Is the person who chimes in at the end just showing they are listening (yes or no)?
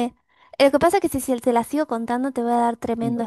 no